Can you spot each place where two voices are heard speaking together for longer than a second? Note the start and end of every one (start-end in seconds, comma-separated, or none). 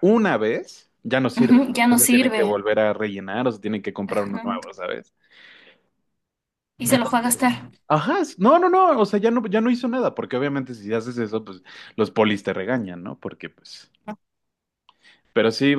1.4-2.6